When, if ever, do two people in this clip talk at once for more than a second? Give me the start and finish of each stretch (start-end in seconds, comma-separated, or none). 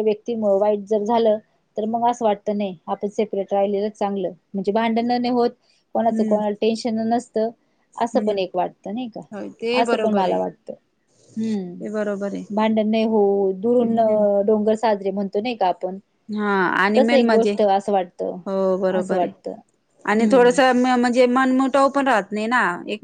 none